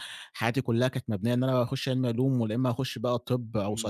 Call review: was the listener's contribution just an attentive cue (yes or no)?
no